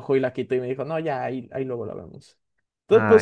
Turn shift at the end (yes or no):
no